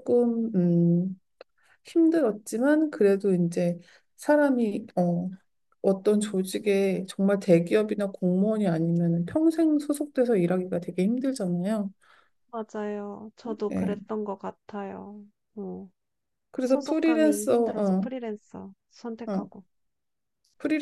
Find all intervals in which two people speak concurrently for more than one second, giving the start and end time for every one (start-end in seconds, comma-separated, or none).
16.6-18.1